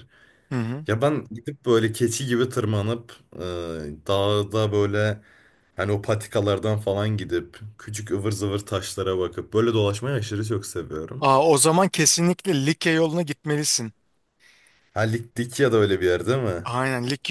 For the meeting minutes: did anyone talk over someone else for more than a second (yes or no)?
no